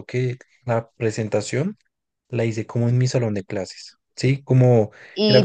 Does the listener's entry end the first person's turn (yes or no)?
yes